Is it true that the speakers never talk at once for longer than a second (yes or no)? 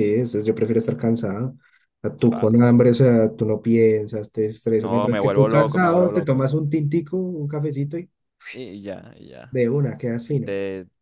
no